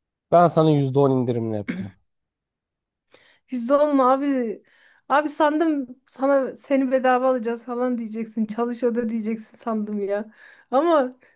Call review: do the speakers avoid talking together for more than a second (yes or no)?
yes